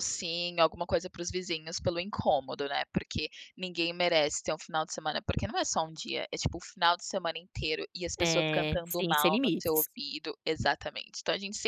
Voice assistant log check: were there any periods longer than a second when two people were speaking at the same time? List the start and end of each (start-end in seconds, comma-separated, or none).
8.2-9.9